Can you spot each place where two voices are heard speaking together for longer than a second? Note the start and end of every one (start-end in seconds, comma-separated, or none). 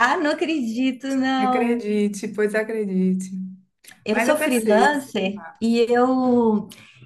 4.1-5.6